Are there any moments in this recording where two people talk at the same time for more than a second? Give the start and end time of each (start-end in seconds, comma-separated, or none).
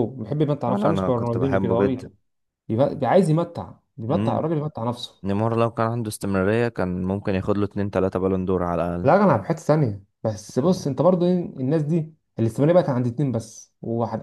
0.7-2.0